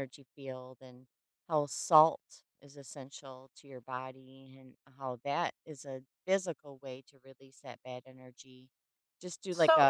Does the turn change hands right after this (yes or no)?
yes